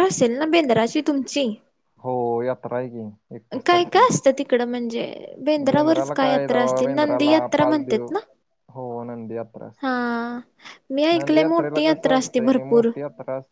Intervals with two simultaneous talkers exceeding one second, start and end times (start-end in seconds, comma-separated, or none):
5.7-8.1, 11.2-12.9